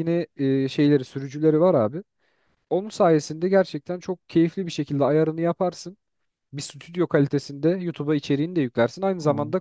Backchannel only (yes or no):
yes